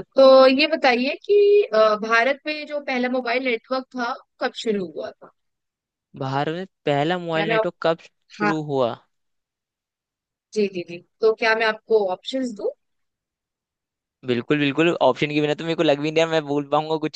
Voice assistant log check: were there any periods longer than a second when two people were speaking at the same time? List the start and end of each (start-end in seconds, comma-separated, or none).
none